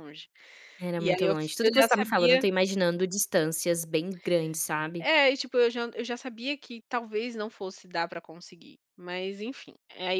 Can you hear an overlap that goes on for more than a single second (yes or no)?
yes